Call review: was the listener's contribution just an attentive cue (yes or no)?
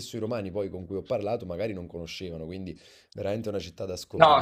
no